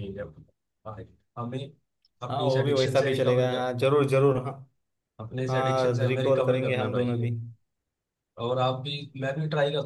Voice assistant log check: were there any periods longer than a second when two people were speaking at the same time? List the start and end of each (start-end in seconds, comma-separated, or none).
2.3-3.7, 5.5-7.2